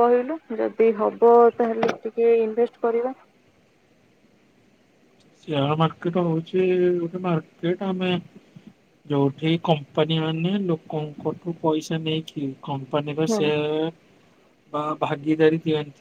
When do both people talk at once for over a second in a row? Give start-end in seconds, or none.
none